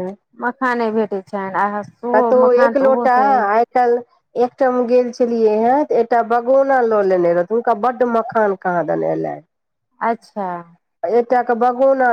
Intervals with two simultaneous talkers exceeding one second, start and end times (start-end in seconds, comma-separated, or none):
none